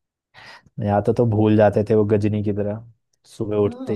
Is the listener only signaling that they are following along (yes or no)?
no